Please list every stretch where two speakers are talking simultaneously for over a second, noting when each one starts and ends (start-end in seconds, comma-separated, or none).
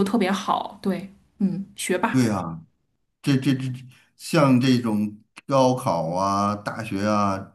none